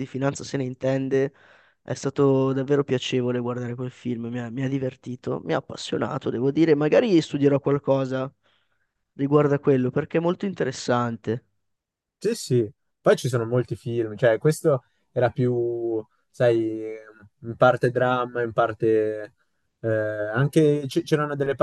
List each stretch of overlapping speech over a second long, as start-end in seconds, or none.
none